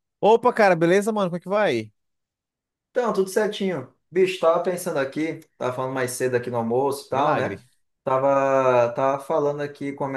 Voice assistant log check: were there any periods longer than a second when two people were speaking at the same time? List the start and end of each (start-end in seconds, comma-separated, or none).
none